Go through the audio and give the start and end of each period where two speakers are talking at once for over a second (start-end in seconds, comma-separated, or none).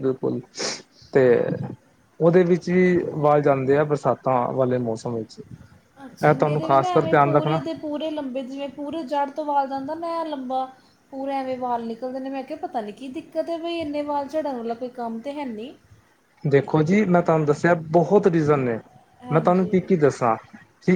6.3-7.6